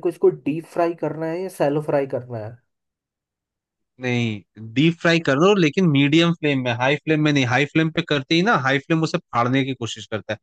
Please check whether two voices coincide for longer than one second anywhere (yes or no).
no